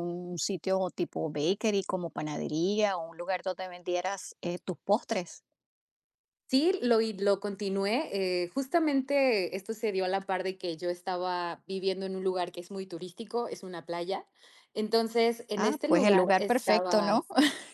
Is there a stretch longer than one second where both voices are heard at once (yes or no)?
yes